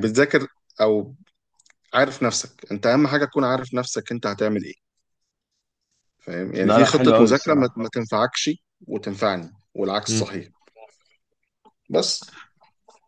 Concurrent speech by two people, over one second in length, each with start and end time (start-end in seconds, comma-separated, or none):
6.6-7.8